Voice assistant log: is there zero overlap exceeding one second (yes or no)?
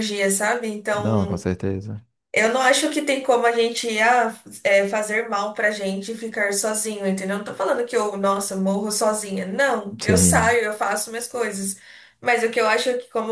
yes